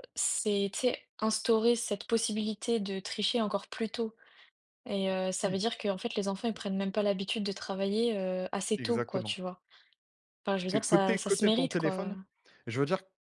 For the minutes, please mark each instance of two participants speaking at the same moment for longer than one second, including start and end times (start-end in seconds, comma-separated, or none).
10.7-12.1